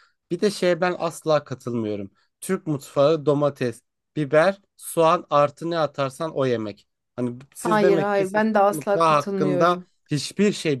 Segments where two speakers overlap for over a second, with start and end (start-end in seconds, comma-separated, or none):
7.6-9.9